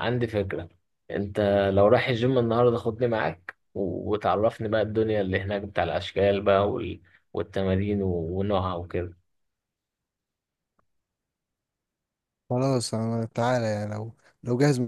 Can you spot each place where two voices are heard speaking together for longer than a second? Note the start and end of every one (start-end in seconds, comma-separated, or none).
none